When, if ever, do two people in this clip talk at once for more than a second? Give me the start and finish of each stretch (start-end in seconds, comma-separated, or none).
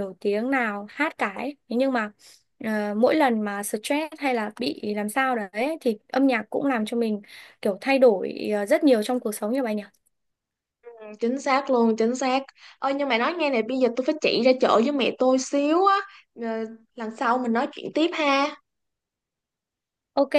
none